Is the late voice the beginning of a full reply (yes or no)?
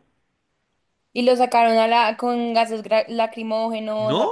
yes